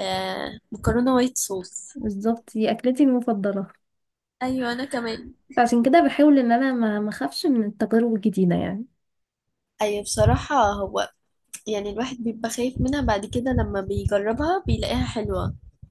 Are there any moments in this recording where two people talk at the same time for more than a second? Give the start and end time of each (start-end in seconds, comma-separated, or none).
none